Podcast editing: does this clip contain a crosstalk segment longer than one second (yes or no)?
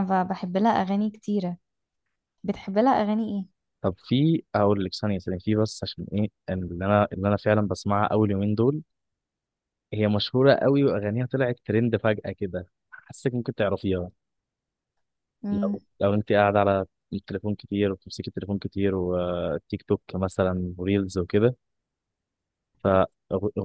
no